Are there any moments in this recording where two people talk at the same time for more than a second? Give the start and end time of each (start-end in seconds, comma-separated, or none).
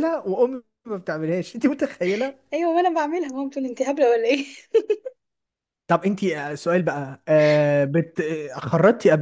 none